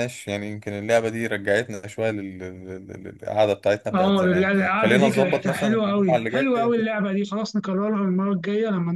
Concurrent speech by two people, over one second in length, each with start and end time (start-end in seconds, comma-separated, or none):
3.9-6.7